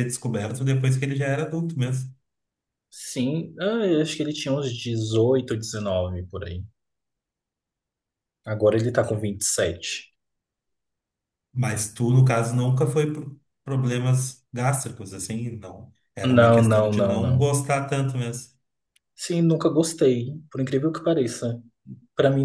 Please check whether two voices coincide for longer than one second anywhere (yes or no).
yes